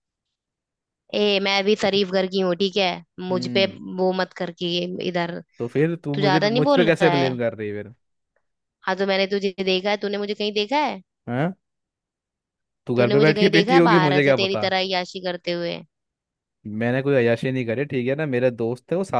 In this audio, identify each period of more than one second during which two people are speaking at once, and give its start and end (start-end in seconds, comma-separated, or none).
6.1-7.4, 13.0-14.7